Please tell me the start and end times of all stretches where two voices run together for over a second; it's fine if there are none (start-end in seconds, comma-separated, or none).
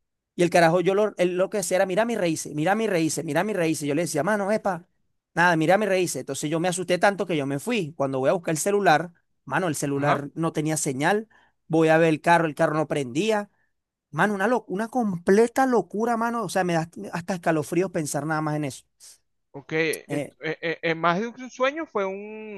none